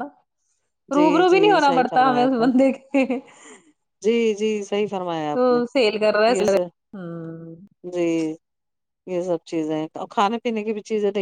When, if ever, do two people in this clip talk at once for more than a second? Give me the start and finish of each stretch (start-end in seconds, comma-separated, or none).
0.9-2.5